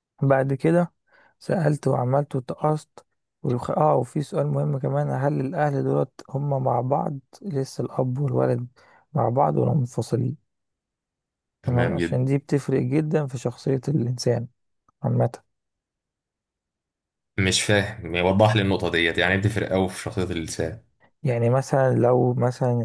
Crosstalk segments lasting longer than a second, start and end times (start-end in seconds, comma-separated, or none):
none